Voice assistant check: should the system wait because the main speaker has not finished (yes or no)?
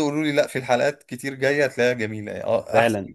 no